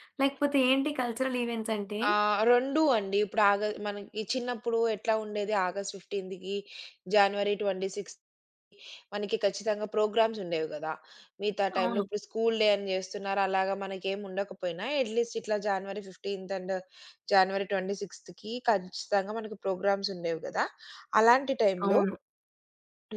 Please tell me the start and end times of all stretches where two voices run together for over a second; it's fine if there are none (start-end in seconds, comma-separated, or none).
none